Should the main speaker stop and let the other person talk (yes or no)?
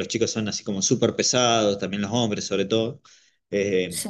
no